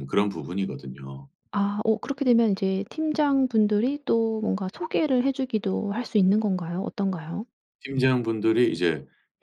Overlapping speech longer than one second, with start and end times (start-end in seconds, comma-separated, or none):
none